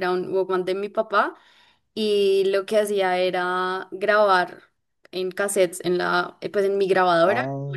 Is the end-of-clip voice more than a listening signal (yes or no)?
no